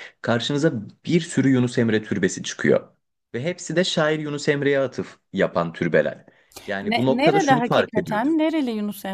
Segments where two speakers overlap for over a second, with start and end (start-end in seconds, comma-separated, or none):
6.8-8.3